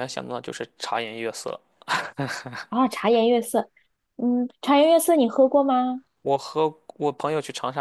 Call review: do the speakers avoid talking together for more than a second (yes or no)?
yes